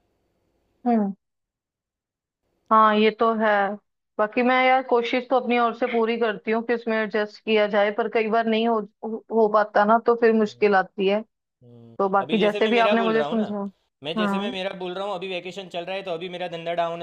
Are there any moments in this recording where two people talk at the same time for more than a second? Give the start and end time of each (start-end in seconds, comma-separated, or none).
12.0-13.4